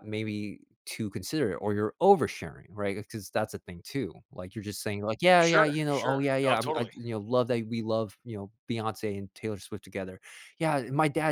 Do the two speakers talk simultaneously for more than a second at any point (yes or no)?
yes